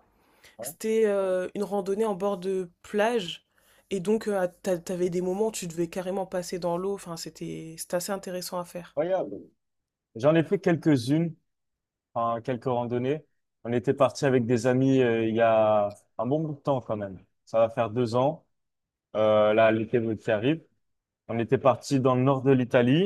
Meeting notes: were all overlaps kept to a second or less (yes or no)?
yes